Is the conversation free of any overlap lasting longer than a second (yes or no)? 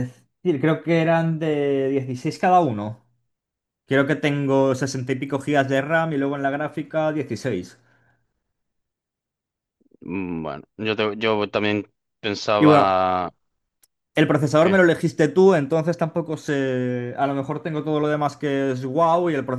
yes